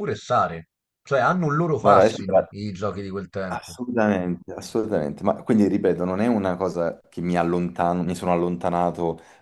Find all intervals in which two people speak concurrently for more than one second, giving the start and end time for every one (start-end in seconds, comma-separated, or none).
none